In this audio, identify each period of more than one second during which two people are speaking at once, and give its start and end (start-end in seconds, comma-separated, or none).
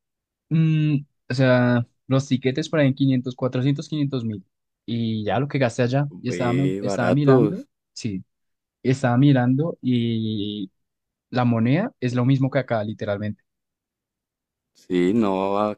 6.3-7.7